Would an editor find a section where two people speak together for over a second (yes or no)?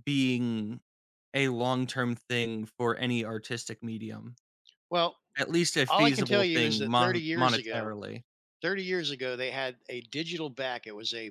yes